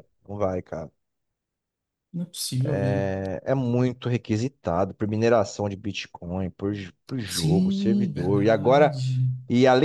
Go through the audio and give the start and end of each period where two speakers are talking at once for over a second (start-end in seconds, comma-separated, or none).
7.2-9.0